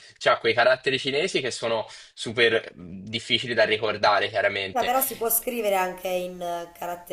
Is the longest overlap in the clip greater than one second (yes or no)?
no